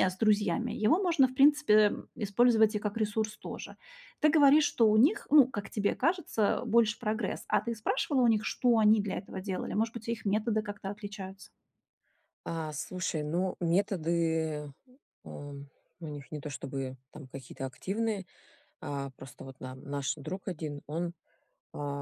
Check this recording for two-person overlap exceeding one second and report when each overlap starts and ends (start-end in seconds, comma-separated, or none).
none